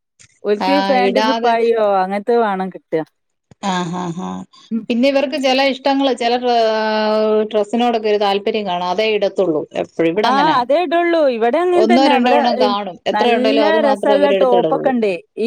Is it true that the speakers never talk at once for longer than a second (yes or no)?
no